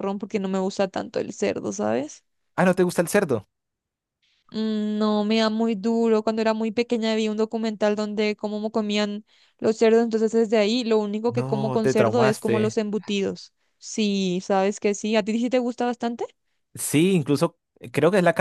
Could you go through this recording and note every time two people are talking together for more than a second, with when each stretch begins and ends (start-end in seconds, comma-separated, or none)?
11.3-12.8